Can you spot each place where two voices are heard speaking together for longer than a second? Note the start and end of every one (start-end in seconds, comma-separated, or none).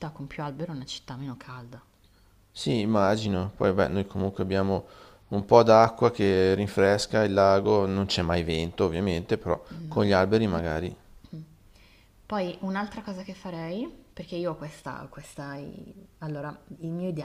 none